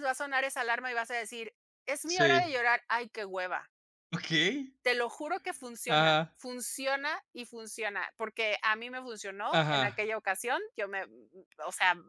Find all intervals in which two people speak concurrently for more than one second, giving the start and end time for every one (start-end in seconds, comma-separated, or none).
none